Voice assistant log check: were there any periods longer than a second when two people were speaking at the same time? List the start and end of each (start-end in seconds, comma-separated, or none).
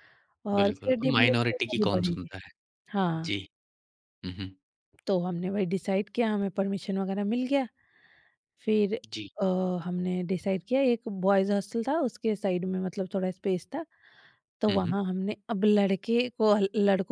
0.6-2.3